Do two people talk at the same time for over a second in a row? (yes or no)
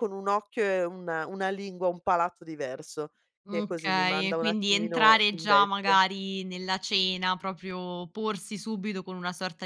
yes